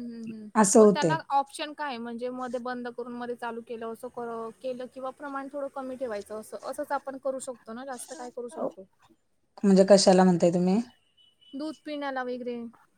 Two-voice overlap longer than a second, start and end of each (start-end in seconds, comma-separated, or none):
none